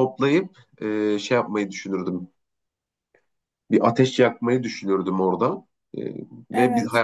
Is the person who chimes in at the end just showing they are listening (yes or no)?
yes